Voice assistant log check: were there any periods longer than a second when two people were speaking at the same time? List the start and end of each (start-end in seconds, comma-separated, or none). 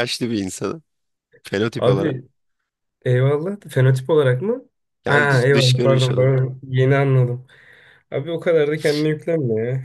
5.1-6.4